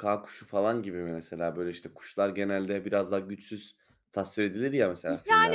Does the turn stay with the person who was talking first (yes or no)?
no